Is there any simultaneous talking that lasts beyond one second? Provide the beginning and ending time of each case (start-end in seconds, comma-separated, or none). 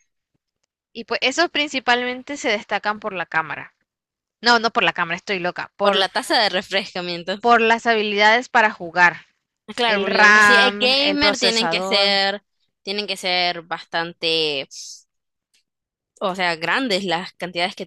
9.8-12.2